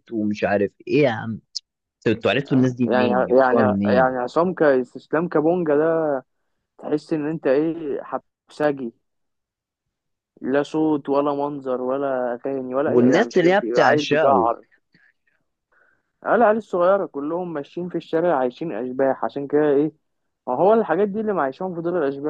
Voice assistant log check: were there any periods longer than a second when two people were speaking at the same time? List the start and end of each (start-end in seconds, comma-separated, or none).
2.3-4.2, 12.9-14.5